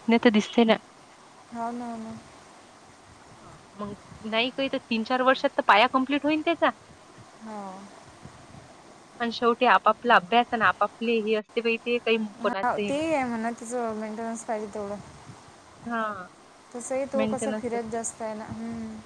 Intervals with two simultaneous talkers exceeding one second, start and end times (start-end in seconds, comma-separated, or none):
none